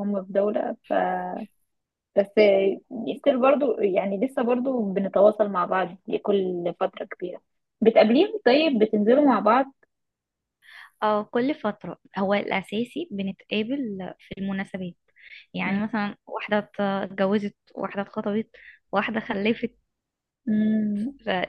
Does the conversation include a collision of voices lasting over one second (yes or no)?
no